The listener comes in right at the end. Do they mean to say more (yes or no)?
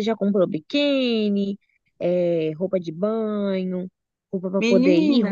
no